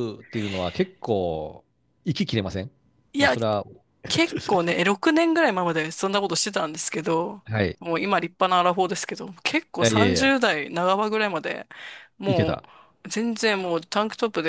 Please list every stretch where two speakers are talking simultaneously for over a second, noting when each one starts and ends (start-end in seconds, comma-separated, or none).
none